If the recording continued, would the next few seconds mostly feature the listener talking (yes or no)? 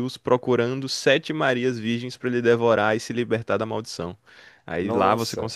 no